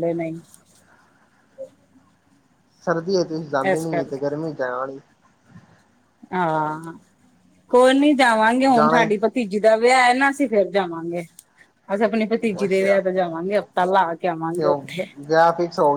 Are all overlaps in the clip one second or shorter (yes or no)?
yes